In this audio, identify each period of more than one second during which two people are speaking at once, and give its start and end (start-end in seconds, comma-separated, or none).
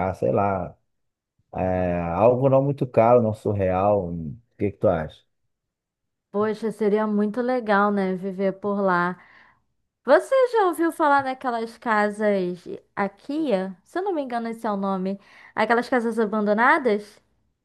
none